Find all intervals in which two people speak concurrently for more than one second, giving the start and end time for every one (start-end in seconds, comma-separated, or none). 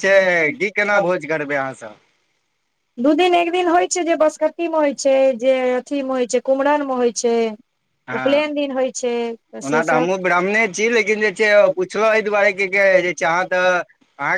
none